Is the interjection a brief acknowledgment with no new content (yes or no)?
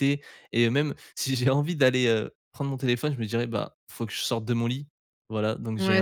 no